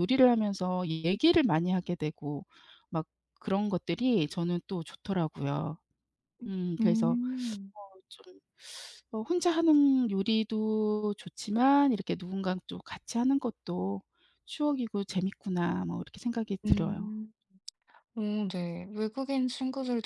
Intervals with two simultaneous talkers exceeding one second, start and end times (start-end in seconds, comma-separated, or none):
none